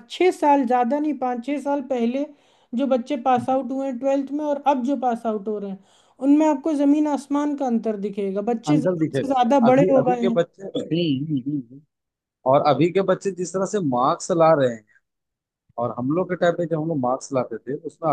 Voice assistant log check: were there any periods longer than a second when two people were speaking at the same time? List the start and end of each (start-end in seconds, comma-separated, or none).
8.7-10.4